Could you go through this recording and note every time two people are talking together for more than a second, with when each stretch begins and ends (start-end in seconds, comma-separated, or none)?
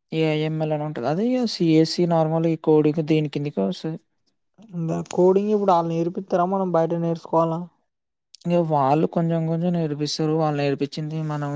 none